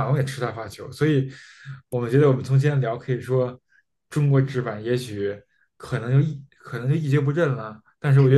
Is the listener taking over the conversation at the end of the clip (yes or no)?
yes